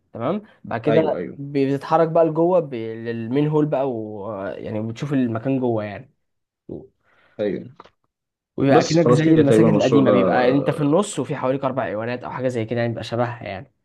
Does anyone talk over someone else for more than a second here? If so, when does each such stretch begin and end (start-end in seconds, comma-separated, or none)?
8.7-10.1